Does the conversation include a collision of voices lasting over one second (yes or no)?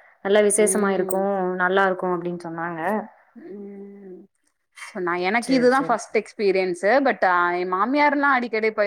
no